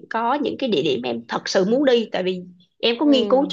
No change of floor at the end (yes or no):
yes